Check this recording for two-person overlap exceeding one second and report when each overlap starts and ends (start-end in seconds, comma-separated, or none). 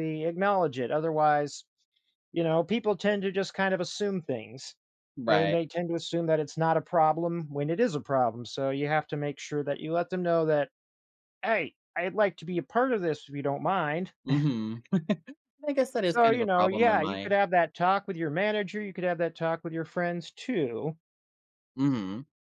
16.1-17.3